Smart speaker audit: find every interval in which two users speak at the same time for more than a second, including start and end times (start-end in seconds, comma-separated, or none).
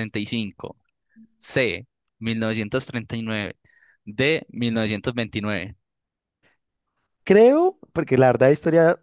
none